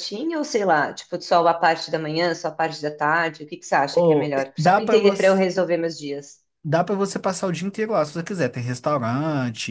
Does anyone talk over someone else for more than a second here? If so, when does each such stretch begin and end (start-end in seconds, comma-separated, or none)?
3.9-5.4